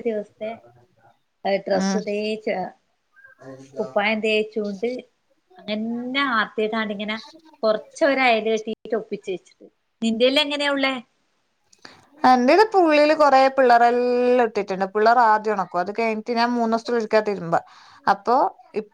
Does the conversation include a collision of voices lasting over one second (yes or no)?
no